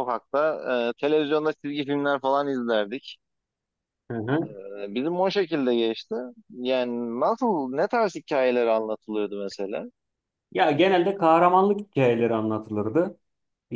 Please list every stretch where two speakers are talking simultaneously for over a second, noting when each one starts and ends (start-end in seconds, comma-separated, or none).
none